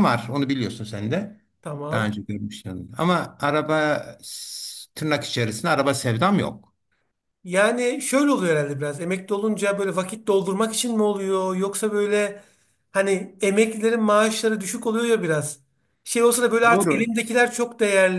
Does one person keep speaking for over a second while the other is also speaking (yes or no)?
no